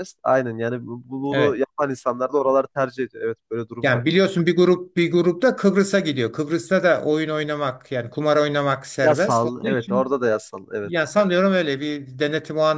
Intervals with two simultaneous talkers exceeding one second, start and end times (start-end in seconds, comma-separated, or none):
9.0-10.2